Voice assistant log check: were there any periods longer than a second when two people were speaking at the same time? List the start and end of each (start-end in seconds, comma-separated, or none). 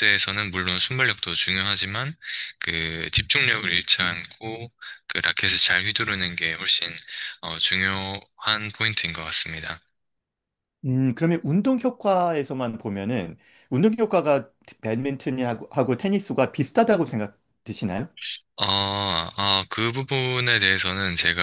none